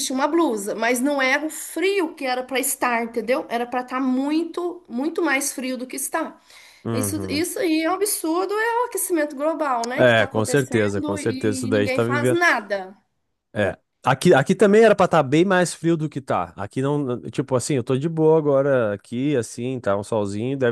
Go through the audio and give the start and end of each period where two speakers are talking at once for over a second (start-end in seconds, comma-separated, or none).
9.9-12.4